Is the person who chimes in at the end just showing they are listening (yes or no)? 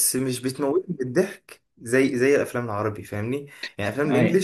yes